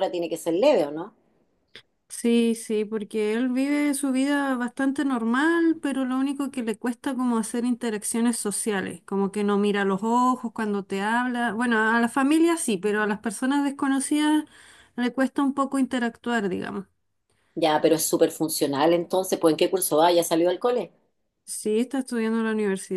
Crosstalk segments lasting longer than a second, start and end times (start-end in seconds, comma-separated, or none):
none